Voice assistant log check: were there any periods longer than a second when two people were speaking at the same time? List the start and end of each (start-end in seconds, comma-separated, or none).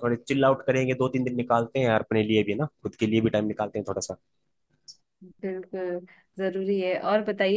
none